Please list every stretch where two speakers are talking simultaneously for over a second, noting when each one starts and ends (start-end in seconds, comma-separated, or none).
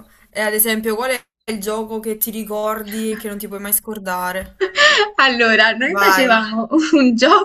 none